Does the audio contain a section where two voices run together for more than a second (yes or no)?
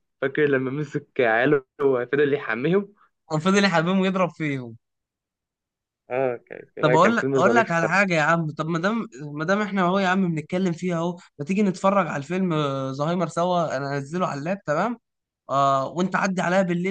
yes